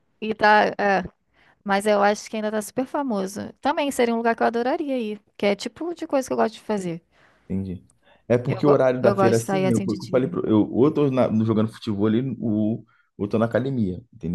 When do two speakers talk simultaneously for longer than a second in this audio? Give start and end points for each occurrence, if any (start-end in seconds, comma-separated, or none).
8.5-10.3